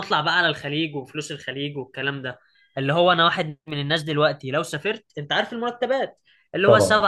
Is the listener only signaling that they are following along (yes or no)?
yes